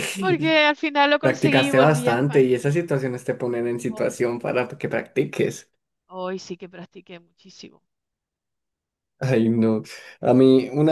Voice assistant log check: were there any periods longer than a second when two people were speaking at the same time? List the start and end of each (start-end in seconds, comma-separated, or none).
1.2-2.5